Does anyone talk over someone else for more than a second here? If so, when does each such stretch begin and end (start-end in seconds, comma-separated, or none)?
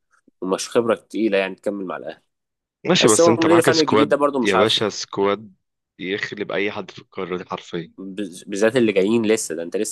3.0-4.8